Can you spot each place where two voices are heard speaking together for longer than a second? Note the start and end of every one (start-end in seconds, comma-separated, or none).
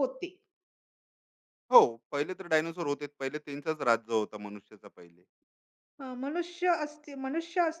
none